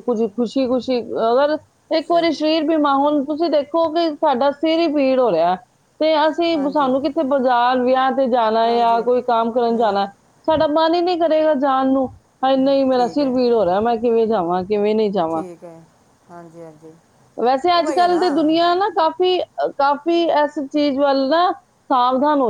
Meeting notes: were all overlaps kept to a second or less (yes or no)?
yes